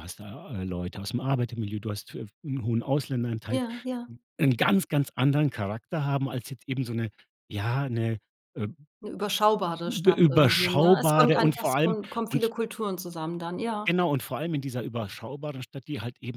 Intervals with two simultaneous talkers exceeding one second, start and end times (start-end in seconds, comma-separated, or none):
9.9-12.5